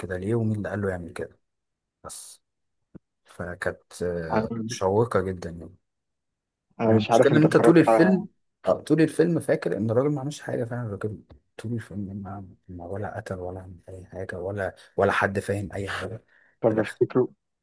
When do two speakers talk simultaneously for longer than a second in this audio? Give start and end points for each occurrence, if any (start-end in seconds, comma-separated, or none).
6.9-8.2